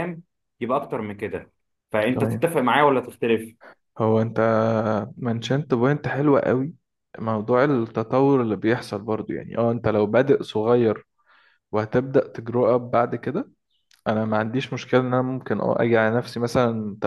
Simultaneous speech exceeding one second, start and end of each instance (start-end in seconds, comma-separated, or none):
none